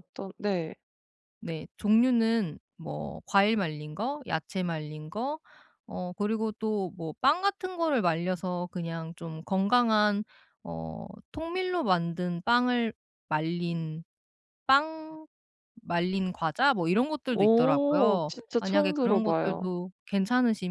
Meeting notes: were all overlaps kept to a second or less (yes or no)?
no